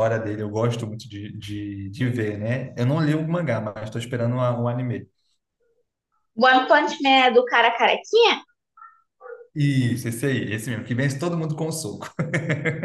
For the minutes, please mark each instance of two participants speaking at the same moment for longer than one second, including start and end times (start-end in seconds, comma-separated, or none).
none